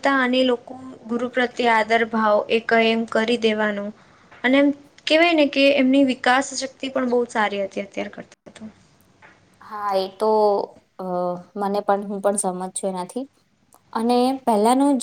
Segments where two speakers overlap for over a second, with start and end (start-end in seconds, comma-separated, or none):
none